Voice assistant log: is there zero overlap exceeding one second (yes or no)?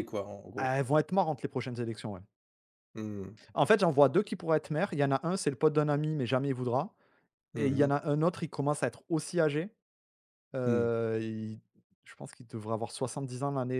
yes